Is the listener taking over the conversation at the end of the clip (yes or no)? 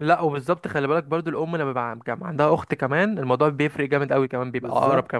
yes